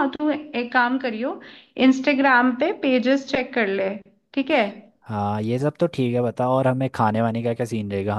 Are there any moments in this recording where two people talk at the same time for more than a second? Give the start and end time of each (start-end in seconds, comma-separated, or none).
none